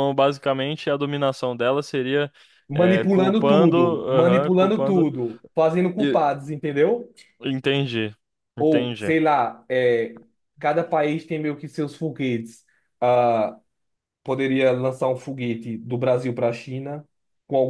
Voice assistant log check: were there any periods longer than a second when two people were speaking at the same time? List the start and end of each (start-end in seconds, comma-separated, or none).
2.7-5.1